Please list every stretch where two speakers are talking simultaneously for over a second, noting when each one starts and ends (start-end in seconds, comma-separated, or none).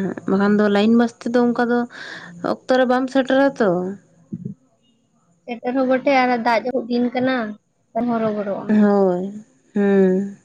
none